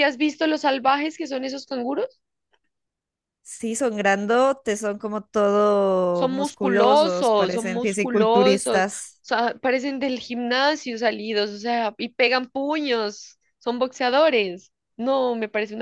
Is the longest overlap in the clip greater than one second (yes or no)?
yes